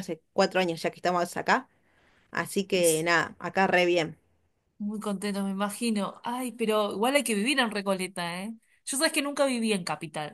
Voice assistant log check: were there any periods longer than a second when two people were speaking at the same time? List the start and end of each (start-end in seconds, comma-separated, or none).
none